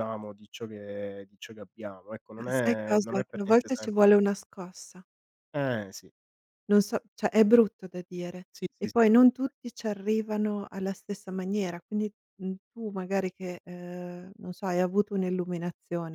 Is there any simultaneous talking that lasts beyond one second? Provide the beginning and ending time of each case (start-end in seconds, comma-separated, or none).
2.4-3.9